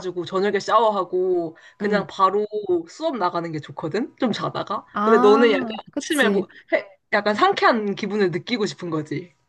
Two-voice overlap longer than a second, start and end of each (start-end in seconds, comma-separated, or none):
4.9-6.5